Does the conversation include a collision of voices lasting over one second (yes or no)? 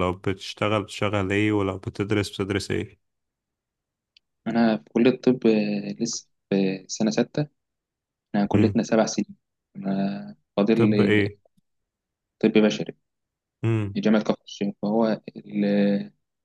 no